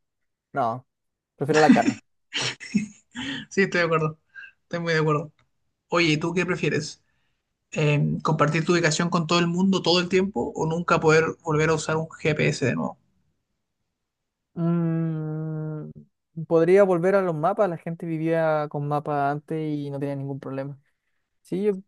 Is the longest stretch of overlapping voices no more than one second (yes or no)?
yes